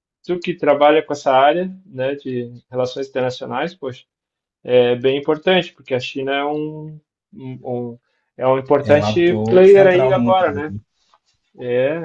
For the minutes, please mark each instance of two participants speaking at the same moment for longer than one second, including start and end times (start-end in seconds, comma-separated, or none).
8.8-10.7